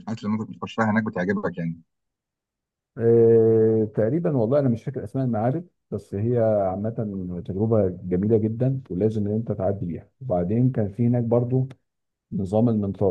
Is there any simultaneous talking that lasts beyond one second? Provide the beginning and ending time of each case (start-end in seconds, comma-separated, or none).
none